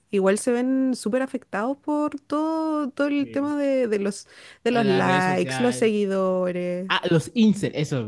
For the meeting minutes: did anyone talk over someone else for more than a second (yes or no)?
yes